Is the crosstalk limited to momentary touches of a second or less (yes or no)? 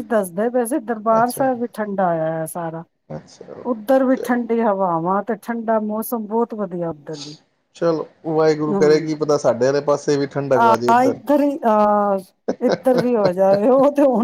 yes